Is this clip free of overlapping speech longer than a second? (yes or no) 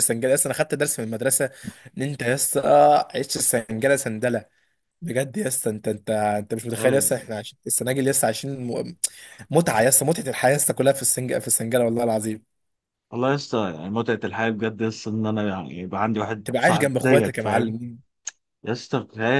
no